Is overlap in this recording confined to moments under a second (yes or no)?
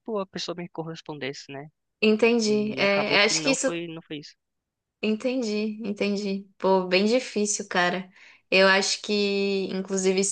no